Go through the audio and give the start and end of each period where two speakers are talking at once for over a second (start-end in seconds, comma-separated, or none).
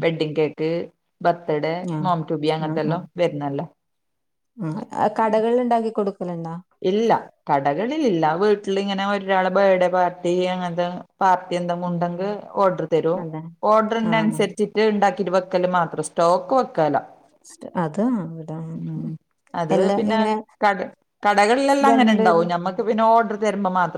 none